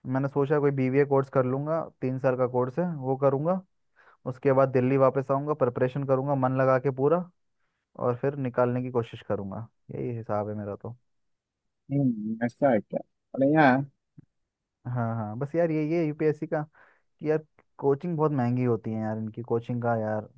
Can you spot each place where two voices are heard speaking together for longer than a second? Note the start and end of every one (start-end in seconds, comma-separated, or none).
none